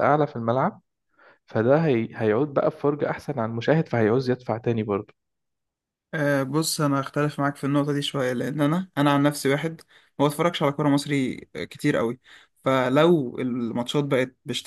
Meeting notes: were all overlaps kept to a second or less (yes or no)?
yes